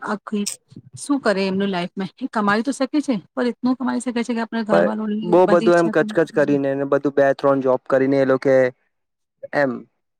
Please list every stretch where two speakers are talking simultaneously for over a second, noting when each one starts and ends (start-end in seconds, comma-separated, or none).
4.7-6.6